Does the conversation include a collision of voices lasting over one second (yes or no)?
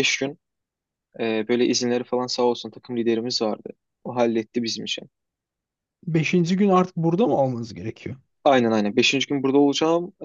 no